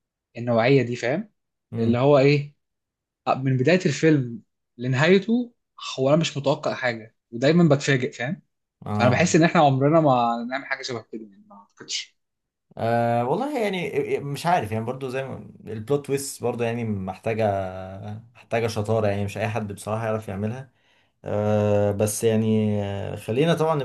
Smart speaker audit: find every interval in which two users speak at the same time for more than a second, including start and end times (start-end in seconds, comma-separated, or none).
none